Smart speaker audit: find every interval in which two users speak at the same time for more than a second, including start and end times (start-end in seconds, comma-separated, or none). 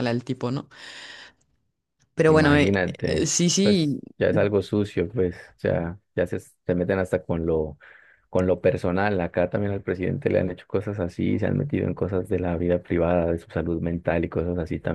2.3-4.0